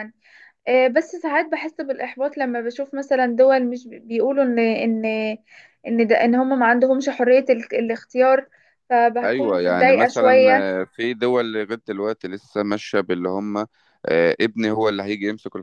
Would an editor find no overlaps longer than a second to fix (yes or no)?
no